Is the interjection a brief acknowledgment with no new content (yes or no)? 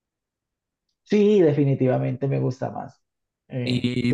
no